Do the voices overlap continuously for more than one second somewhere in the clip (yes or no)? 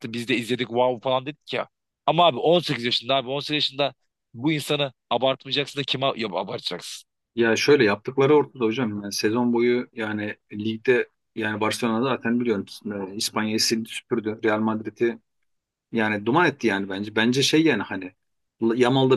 no